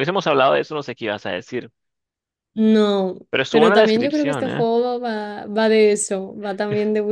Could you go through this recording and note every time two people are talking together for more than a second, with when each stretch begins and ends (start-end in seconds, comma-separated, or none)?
3.3-4.7